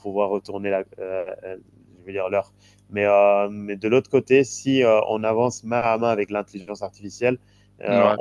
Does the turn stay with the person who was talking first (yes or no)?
yes